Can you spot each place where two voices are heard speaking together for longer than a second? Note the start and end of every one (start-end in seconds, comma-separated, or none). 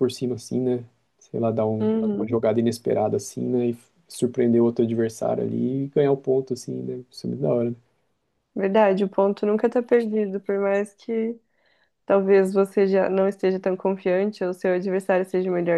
none